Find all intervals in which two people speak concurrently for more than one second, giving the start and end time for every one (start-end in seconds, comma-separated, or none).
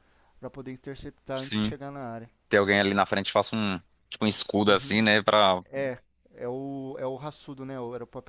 none